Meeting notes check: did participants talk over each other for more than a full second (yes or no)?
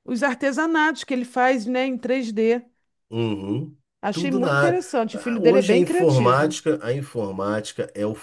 yes